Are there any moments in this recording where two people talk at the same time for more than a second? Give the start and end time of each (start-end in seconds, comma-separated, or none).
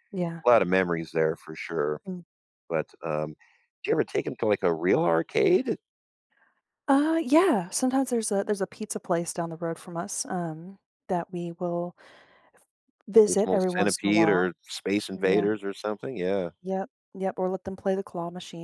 13.3-14.5